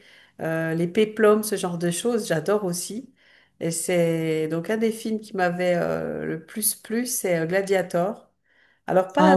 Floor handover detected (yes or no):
no